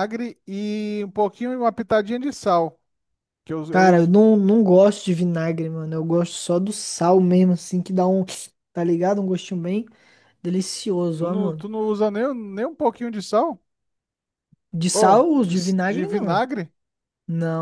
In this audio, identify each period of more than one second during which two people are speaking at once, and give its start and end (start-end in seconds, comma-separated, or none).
14.9-16.4